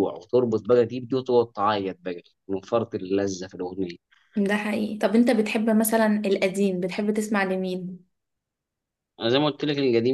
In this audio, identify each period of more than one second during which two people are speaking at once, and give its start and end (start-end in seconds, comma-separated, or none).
none